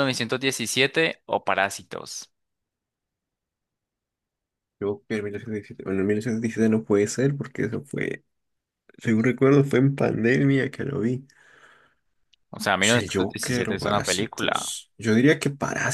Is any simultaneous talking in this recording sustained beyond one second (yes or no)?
yes